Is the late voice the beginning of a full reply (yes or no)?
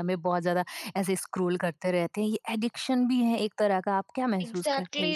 yes